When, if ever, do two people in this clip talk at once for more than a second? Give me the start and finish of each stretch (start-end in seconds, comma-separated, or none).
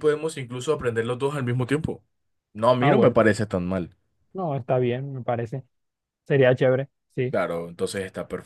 none